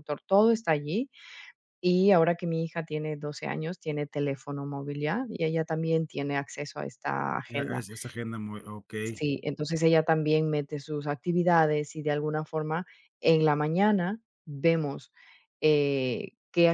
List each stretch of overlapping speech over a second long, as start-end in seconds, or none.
none